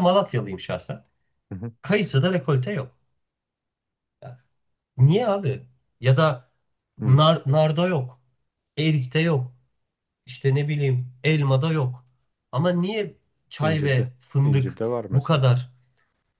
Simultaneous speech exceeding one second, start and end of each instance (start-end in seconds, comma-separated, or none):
13.6-15.4